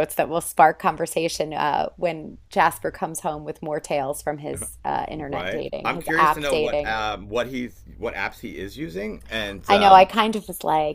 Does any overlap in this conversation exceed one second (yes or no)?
yes